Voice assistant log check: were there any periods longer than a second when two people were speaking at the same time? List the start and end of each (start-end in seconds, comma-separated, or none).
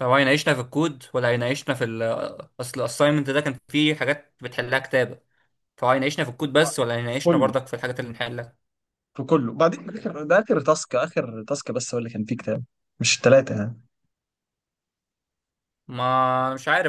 none